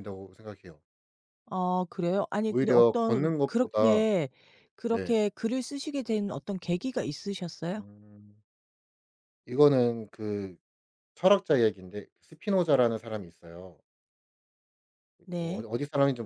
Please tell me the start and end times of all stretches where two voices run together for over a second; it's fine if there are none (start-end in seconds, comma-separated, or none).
2.5-4.1